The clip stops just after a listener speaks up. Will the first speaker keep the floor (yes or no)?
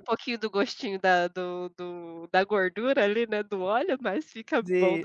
no